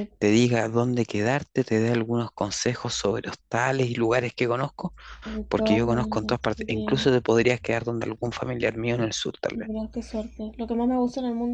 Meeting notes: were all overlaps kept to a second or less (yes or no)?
no